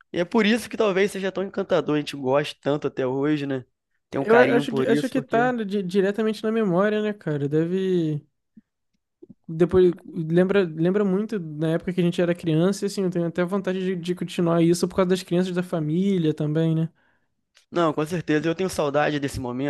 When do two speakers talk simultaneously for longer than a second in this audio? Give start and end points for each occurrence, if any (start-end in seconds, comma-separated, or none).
4.2-5.5